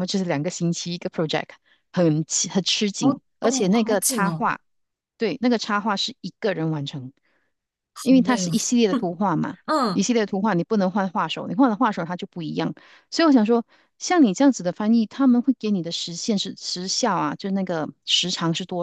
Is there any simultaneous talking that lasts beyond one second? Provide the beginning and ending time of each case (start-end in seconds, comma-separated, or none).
3.0-4.5